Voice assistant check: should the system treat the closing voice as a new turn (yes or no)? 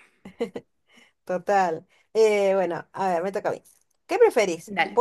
no